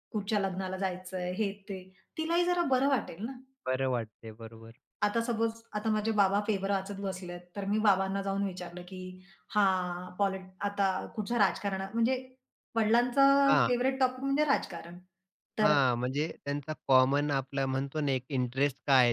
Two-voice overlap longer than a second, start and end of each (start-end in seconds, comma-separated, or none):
none